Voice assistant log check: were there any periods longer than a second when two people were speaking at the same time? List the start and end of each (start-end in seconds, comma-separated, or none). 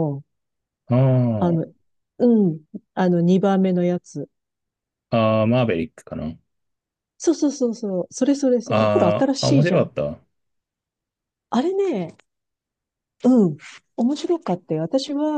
8.6-9.9